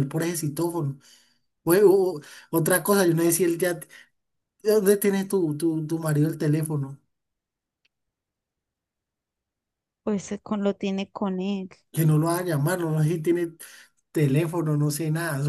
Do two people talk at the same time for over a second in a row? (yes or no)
no